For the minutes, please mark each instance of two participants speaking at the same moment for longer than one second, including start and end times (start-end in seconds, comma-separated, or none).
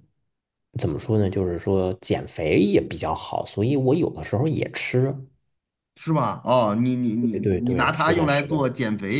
7.3-8.6